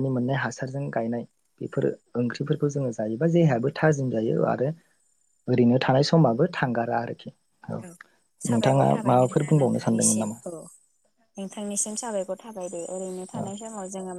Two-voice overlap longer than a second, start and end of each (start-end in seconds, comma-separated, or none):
8.5-10.4